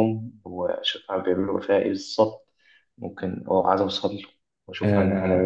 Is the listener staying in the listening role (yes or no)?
no